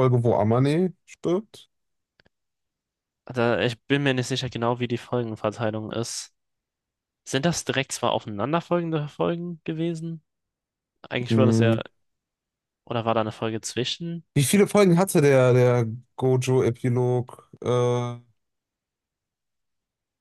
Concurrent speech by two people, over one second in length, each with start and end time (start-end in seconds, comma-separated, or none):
none